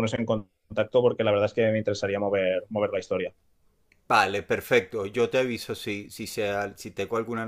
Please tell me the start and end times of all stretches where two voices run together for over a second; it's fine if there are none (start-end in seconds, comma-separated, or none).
none